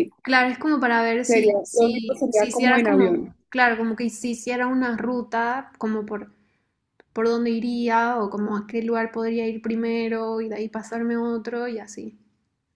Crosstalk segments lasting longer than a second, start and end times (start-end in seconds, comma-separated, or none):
1.2-3.3